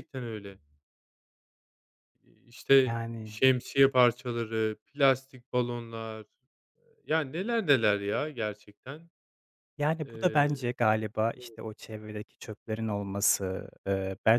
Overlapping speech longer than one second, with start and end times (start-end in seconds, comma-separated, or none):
none